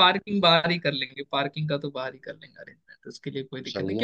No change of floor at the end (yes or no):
yes